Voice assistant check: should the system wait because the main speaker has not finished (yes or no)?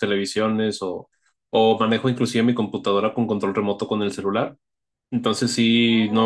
yes